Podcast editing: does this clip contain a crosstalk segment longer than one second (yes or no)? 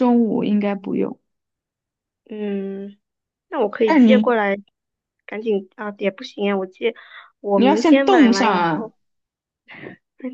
yes